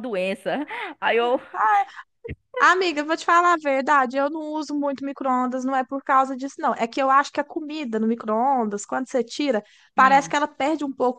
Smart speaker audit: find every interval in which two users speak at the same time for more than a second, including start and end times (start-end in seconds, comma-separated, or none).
none